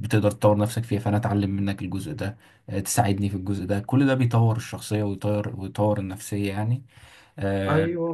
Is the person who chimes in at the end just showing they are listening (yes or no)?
no